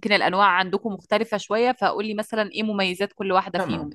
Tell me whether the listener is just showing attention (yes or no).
no